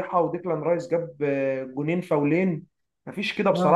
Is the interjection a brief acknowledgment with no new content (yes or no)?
yes